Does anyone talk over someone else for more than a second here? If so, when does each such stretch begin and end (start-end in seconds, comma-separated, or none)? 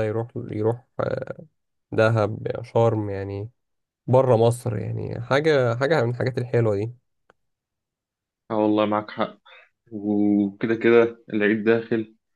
none